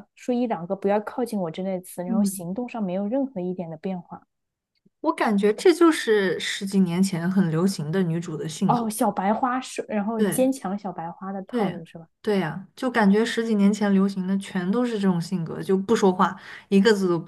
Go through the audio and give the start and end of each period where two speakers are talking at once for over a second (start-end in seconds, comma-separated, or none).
none